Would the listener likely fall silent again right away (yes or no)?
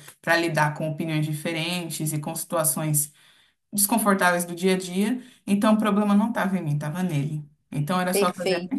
no